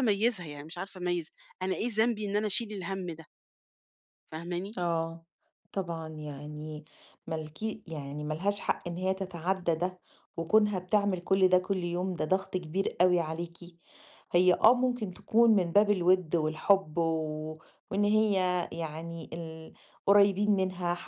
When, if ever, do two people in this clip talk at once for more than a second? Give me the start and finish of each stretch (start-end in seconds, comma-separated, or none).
none